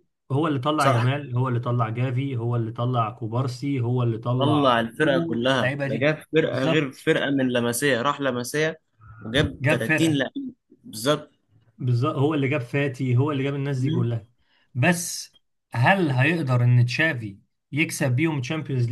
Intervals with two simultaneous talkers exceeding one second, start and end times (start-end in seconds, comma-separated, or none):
4.4-6.9